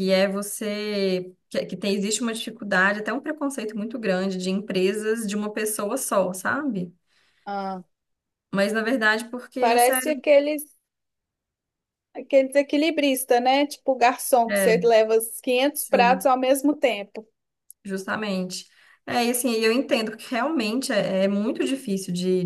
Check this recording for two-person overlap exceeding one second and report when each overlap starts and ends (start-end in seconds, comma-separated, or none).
none